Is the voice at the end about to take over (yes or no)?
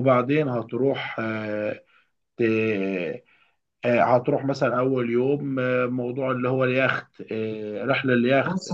yes